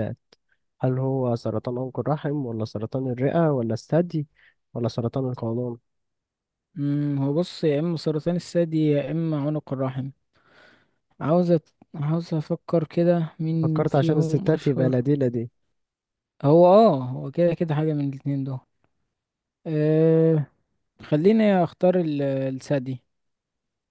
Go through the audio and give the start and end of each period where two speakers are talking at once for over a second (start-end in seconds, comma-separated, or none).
13.6-15.0